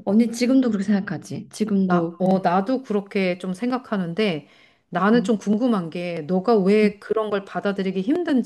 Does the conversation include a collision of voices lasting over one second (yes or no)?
no